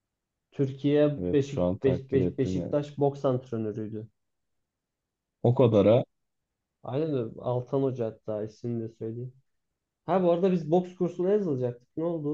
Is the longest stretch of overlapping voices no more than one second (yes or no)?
no